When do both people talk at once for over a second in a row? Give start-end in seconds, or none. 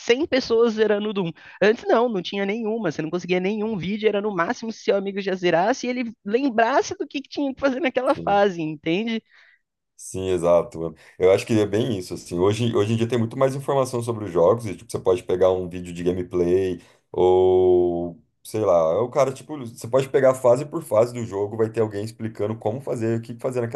none